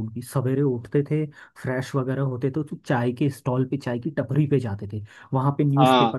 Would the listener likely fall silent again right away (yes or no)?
yes